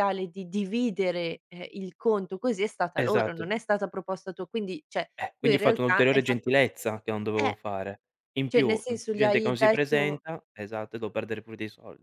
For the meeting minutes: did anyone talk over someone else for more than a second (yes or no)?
yes